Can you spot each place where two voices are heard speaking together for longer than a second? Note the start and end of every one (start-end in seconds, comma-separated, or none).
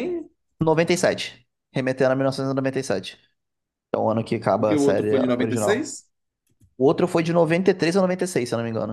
4.5-6.0